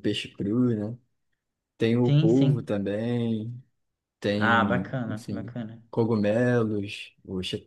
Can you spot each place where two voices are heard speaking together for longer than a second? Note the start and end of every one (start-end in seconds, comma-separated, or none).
4.4-5.8